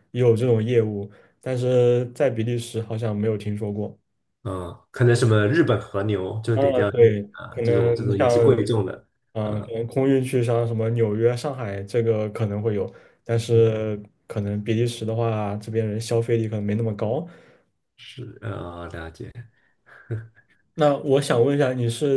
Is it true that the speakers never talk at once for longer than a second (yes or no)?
no